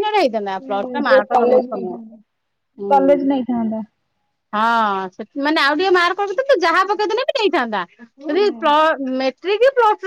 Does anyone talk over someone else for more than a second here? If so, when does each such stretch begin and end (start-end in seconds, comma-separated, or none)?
0.6-2.2